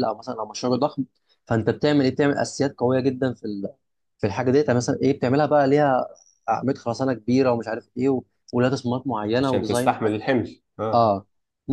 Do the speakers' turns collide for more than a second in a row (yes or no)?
no